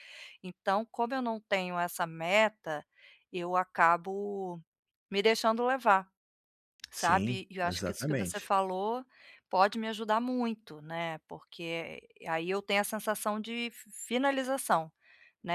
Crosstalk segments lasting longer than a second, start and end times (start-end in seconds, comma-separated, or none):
6.9-8.5